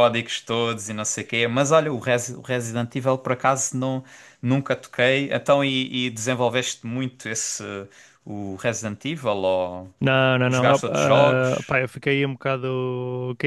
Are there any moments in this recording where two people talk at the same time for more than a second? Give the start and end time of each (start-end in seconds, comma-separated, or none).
10.4-11.8